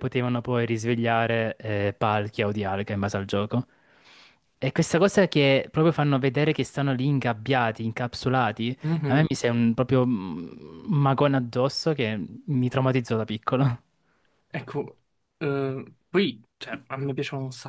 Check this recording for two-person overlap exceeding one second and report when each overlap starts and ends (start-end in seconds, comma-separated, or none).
none